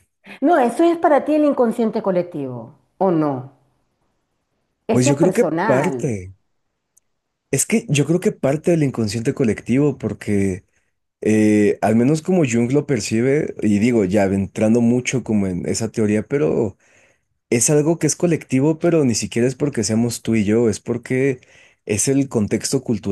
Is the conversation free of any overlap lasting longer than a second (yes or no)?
no